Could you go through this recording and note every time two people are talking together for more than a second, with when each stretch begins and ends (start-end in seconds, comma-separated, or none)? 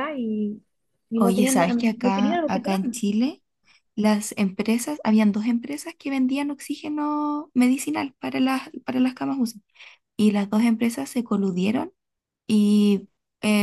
1.2-2.8